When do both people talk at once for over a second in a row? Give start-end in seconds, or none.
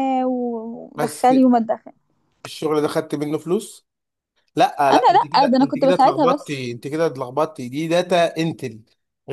4.9-6.6